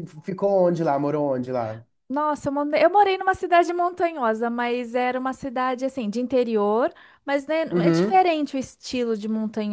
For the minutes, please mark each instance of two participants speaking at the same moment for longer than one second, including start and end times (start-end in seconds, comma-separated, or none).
none